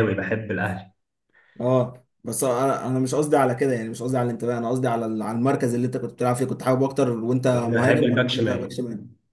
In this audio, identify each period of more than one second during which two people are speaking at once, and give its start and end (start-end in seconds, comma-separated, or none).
7.5-8.8